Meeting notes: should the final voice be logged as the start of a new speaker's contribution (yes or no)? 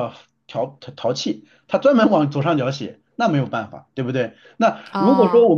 no